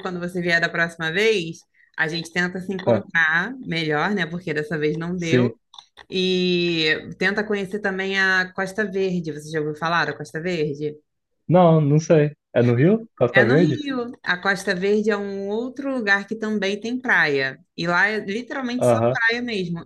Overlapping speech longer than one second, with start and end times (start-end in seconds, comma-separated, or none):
none